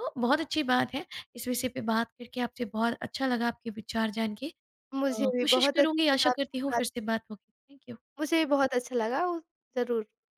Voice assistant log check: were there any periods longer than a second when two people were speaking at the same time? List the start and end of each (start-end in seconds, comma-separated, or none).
5.0-6.8